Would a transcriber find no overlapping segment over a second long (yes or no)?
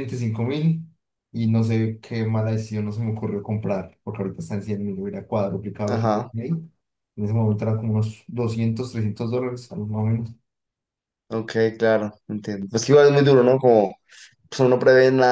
yes